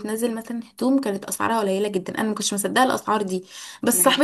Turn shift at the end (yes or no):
no